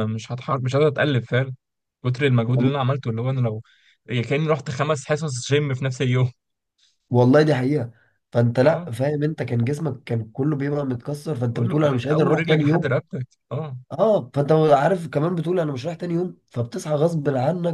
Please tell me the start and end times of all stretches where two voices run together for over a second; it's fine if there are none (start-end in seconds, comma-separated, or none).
11.5-12.9